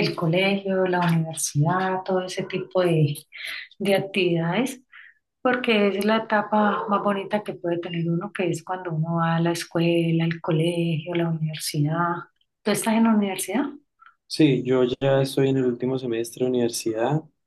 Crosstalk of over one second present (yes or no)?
no